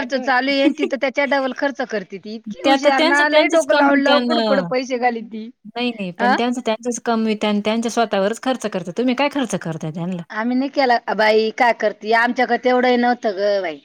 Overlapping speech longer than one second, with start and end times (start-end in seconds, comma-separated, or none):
2.6-4.6